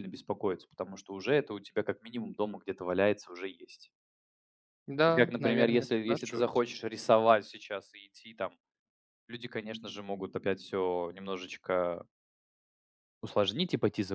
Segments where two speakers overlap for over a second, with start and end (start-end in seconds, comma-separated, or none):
5.1-6.6